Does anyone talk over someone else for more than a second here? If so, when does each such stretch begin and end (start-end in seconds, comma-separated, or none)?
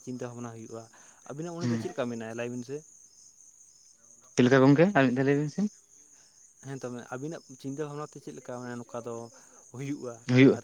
none